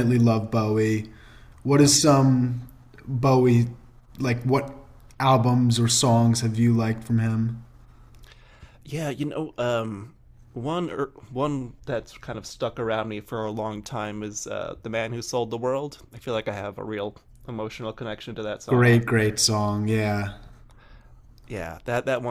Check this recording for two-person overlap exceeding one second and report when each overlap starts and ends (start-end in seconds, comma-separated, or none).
none